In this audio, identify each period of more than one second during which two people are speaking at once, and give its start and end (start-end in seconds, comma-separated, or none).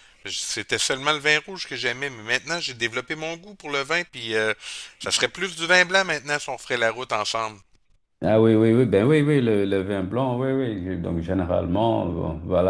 none